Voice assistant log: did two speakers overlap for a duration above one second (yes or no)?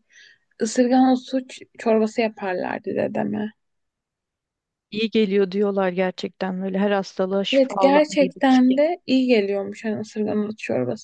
yes